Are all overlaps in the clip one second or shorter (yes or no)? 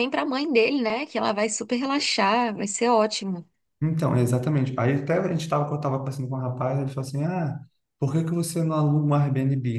yes